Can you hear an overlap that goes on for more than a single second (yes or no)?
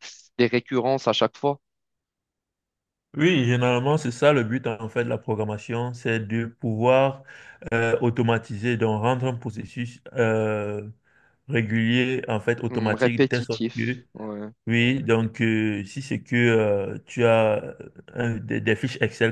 yes